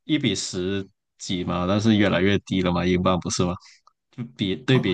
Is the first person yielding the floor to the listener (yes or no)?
yes